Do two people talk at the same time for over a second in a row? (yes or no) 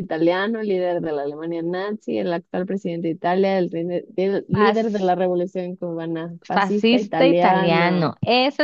yes